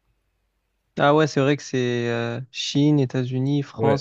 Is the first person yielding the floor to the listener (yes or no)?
yes